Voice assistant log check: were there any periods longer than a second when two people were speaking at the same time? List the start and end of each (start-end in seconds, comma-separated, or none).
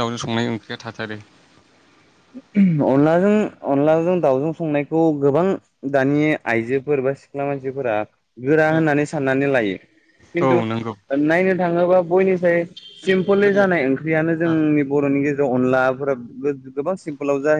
none